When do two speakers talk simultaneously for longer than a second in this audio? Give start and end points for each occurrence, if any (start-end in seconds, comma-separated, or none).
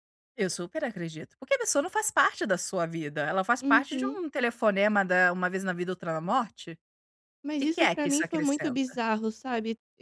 7.6-9.0